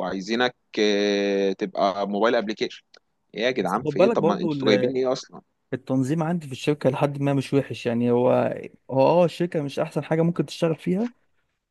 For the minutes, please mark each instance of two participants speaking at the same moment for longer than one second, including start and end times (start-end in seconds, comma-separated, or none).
3.6-5.0